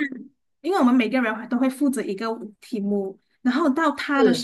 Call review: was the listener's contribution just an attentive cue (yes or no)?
yes